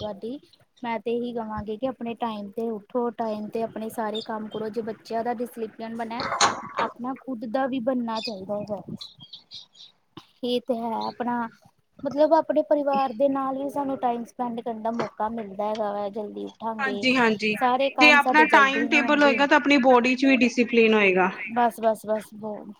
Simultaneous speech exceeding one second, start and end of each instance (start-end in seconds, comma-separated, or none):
18.0-19.4